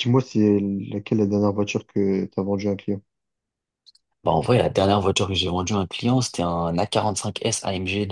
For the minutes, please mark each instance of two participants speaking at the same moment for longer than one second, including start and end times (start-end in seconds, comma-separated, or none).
none